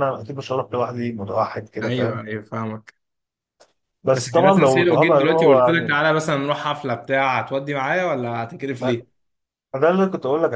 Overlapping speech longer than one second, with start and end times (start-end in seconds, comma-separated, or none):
4.1-6.0